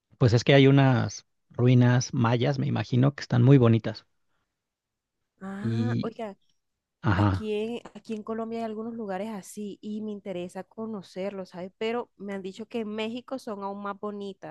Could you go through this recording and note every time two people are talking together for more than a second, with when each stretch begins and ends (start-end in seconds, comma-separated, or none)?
none